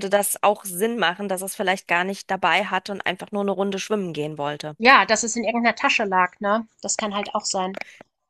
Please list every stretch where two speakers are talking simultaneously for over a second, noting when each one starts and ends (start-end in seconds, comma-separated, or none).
none